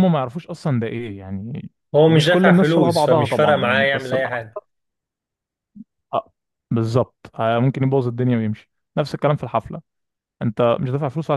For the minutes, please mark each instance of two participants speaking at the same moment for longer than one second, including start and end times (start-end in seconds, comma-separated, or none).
1.9-4.6